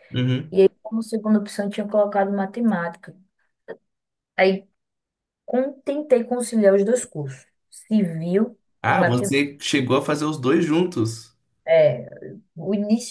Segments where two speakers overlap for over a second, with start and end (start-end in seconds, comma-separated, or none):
none